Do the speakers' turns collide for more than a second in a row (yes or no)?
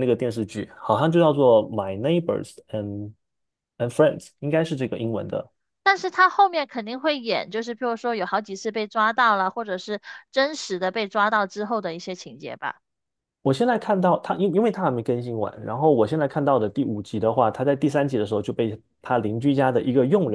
no